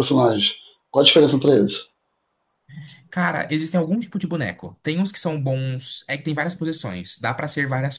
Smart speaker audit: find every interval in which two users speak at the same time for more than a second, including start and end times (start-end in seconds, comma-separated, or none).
none